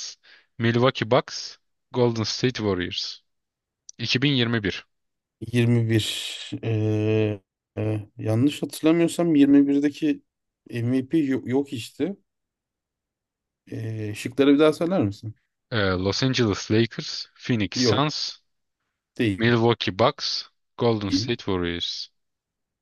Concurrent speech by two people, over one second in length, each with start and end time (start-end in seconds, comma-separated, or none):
none